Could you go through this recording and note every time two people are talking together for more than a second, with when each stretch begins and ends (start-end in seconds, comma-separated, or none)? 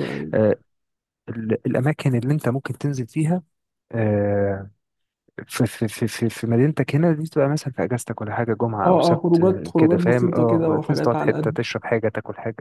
8.8-11.6